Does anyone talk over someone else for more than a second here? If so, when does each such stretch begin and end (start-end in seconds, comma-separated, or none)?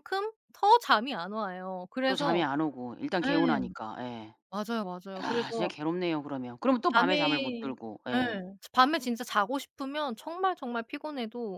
none